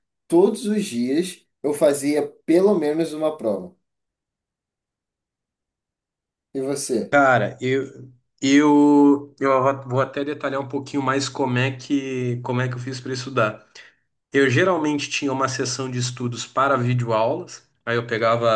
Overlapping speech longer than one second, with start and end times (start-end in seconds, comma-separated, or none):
none